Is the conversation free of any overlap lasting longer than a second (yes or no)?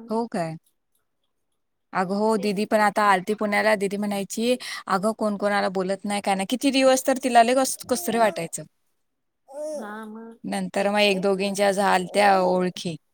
no